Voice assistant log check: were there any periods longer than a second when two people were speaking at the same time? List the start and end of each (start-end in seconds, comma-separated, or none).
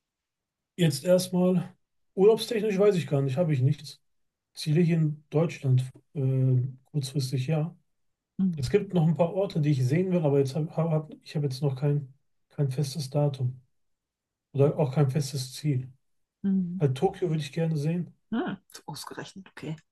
none